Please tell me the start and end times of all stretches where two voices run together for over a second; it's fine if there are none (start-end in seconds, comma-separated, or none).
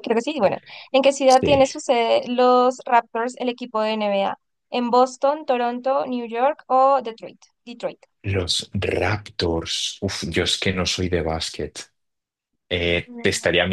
none